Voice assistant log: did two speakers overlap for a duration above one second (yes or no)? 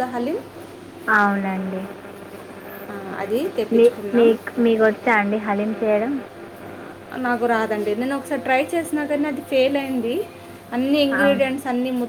no